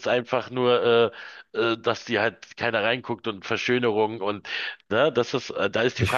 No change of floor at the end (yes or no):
no